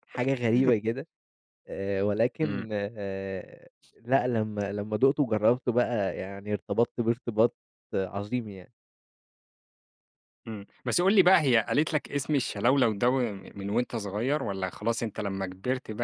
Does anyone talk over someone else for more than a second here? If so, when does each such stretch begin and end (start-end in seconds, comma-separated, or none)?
none